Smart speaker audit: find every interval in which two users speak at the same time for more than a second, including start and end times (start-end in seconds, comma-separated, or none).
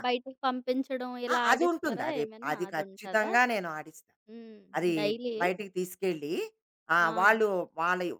1.3-3.3